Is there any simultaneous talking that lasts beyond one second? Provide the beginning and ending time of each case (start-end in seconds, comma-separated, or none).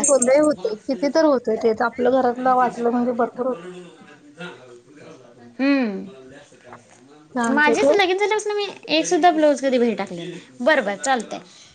none